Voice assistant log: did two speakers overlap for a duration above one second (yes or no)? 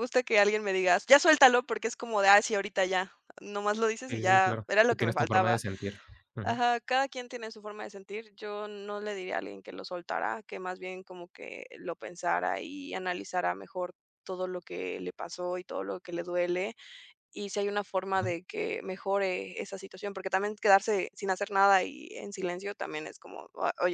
yes